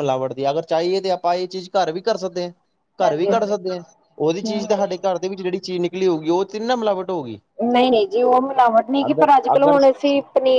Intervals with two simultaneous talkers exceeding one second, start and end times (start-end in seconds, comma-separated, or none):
none